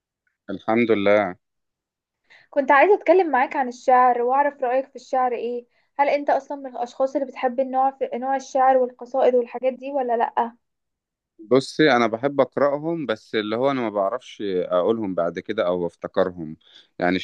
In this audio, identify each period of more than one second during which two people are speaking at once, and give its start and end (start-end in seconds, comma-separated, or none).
none